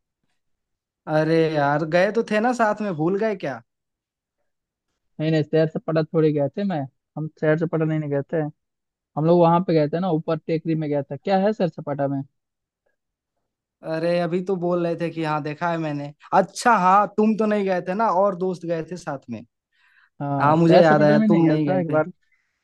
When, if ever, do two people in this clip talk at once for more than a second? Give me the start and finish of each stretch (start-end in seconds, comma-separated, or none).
20.4-22.0